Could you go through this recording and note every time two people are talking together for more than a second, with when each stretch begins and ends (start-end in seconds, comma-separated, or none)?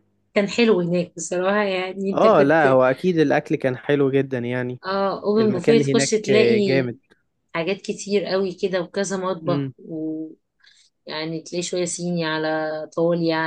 5.4-6.9